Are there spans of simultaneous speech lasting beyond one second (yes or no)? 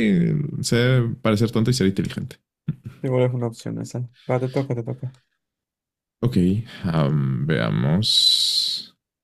no